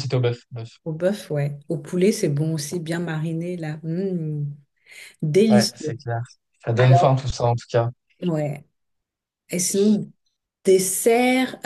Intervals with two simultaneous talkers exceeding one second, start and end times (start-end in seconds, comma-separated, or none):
none